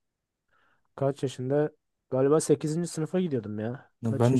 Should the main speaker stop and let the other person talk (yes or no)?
yes